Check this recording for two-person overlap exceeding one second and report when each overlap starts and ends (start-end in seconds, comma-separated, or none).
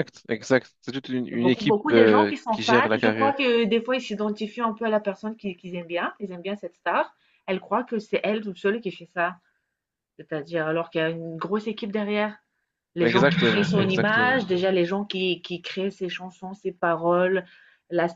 1.3-3.3, 13.0-14.4